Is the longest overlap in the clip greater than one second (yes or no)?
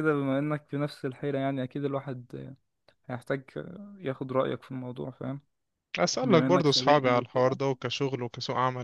yes